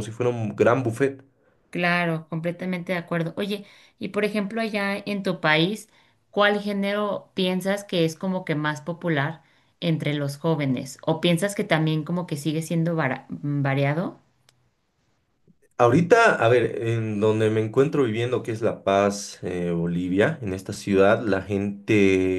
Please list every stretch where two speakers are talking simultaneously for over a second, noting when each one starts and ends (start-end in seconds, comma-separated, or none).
none